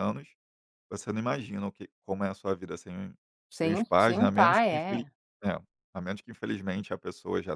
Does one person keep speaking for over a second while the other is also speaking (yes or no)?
yes